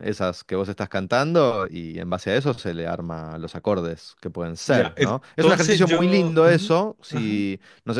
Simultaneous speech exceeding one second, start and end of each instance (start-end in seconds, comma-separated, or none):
4.7-7.5